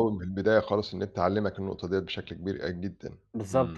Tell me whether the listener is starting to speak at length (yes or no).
yes